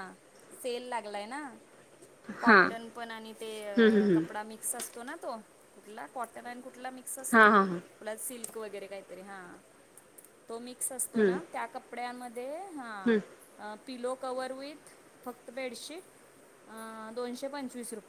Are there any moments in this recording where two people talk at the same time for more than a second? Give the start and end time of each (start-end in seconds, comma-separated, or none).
none